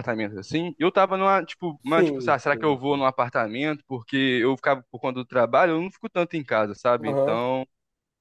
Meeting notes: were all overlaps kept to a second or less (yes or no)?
no